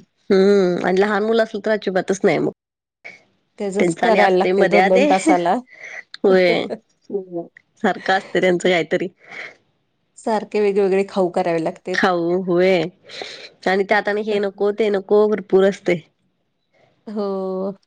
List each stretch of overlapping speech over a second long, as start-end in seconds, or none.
3.8-5.0